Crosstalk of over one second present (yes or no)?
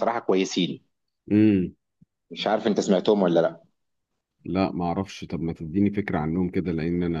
no